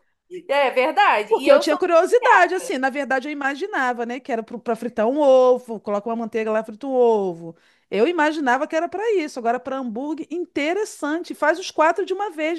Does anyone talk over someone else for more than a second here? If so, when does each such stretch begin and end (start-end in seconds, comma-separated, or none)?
1.3-2.7